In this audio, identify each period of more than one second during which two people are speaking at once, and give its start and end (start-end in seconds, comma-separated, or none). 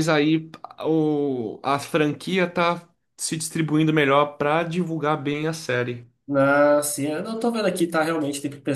none